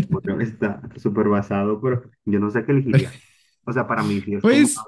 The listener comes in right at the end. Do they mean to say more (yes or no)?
yes